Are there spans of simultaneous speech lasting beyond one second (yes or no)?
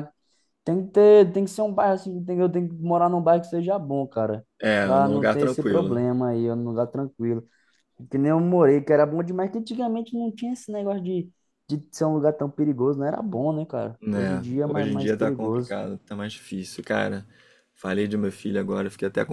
yes